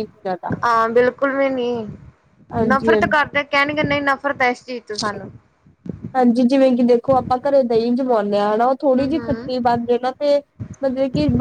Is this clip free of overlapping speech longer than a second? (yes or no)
yes